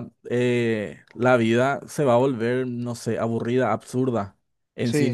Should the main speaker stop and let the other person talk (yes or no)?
no